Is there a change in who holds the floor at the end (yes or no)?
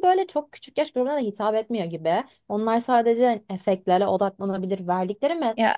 no